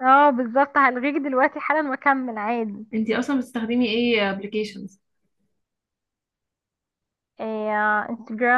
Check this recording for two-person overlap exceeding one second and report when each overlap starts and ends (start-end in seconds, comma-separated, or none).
none